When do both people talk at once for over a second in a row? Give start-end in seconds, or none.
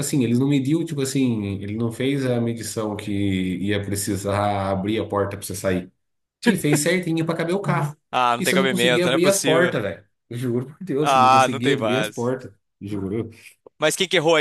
8.4-9.8, 11.0-12.3